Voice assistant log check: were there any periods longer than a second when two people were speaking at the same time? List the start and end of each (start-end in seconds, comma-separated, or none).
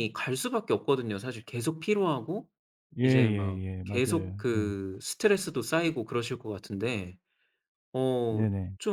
3.0-4.8